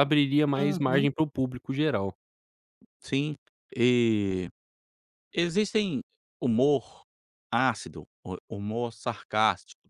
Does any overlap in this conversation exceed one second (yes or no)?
no